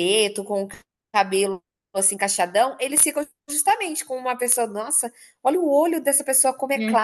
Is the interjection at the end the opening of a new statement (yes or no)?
no